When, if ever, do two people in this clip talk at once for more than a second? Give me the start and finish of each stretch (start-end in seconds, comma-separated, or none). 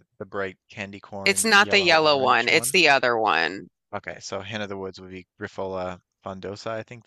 1.2-2.8